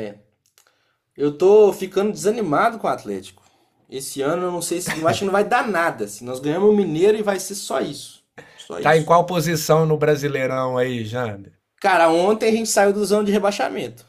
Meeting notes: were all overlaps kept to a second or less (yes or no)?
yes